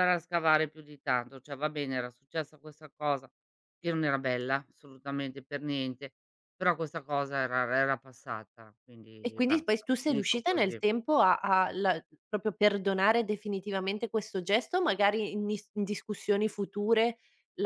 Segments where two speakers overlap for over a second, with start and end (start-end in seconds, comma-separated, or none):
9.2-10.8